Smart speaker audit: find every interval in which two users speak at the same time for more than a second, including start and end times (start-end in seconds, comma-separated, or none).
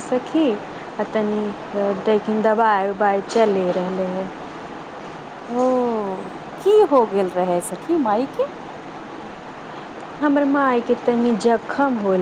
none